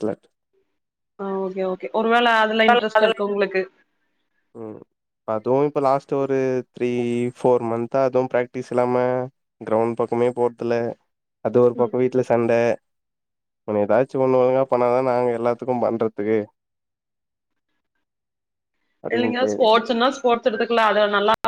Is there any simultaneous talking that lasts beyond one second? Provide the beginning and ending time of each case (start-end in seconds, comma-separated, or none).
none